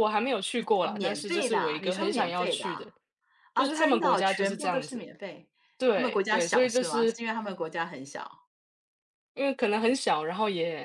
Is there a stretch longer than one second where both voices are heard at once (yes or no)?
yes